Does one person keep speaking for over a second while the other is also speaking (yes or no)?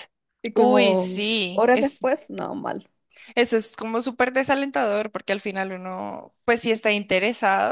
yes